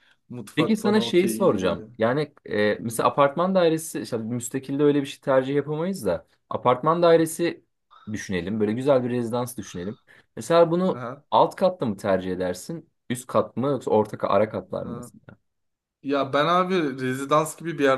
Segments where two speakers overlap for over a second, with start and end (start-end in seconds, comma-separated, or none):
0.5-1.9